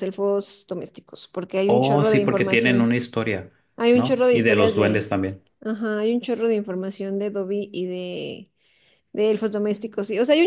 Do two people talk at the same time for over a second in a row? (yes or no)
yes